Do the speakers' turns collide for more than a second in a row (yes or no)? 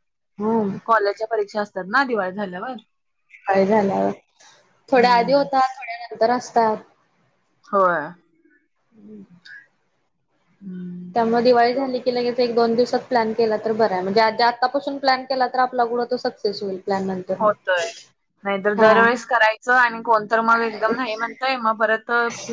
no